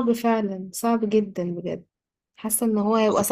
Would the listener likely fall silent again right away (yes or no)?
yes